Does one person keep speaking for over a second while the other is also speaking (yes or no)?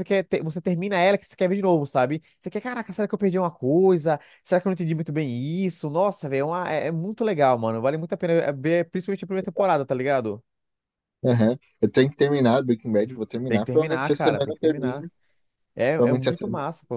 yes